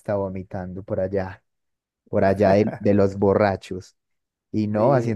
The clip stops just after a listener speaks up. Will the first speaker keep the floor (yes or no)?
yes